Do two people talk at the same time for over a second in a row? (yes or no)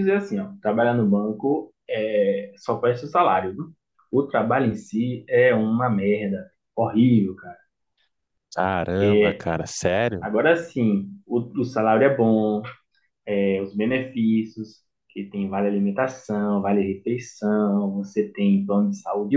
no